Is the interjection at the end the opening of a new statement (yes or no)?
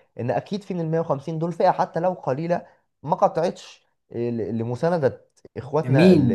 yes